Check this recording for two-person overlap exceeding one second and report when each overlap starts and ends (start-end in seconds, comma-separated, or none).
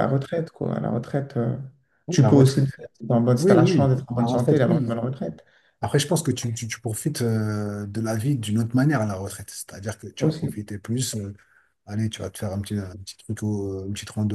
3.3-5.0